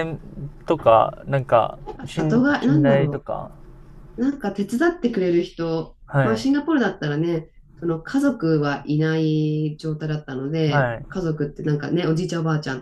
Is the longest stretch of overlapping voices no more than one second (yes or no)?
no